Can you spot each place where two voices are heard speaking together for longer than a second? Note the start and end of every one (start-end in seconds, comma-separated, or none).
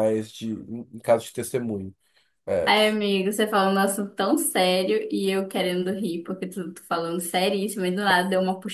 none